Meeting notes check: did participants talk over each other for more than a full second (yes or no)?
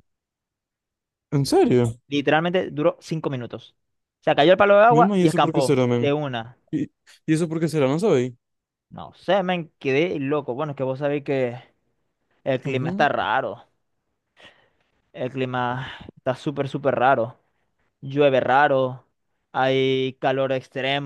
yes